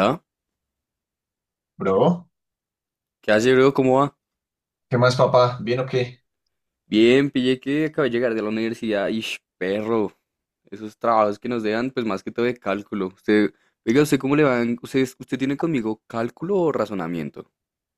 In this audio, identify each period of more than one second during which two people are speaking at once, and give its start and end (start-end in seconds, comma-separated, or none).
none